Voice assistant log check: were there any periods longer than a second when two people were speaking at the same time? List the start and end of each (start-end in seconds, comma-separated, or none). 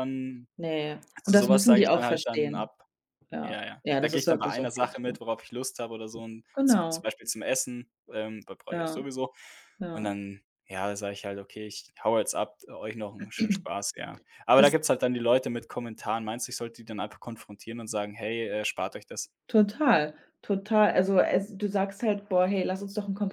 1.2-2.7, 3.4-5.1